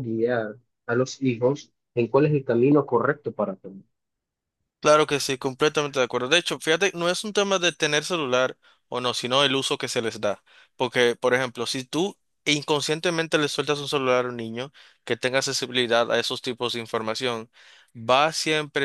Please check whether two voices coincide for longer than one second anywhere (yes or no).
no